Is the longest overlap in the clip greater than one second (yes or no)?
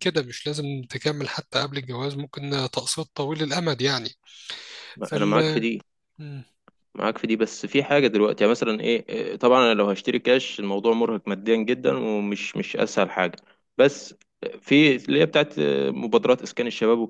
no